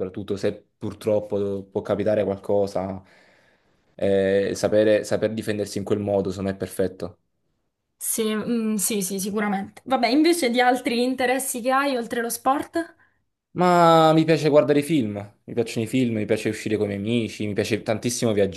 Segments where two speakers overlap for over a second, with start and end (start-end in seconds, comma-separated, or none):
none